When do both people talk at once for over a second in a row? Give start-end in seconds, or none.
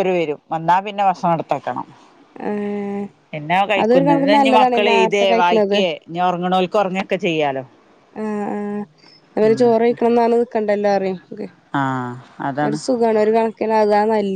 3.8-5.8